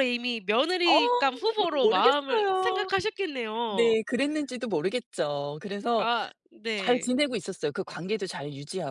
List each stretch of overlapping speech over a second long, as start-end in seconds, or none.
0.8-2.9